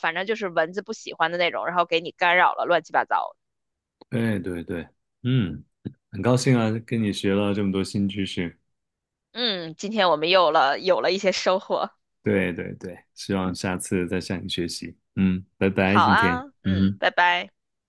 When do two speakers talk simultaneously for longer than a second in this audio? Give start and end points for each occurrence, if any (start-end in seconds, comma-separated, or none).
15.8-17.1